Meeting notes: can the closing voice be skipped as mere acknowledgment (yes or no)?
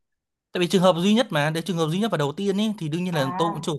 yes